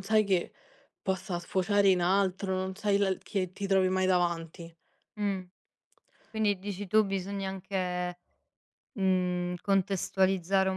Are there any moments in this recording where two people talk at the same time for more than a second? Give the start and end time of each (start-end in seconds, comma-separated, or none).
none